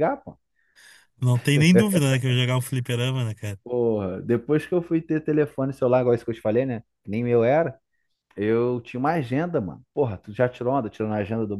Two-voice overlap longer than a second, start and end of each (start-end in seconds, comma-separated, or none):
none